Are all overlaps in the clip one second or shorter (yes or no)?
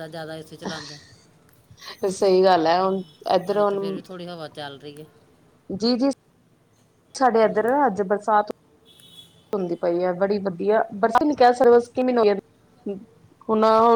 yes